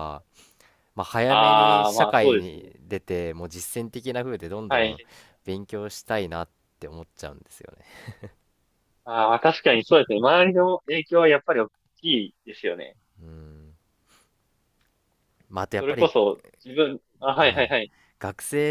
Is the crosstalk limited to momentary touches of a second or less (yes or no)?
no